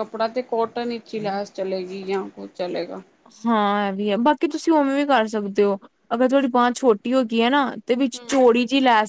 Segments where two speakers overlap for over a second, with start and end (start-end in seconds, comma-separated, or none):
none